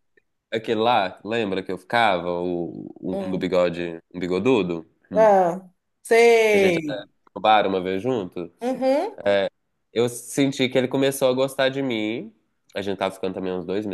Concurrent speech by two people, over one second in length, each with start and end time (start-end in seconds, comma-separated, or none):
none